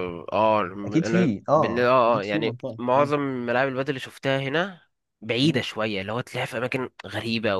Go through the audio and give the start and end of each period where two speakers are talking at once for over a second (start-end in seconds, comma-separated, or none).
1.0-3.1